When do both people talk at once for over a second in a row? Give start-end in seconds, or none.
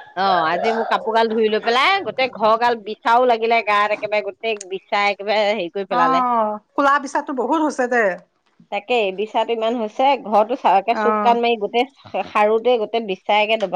none